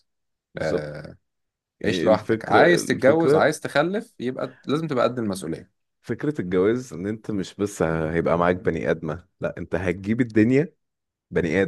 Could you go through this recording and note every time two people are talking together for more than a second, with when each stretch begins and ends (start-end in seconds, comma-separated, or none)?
1.9-3.5